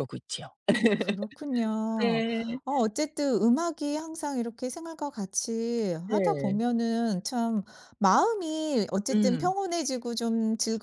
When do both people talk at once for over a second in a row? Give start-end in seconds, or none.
none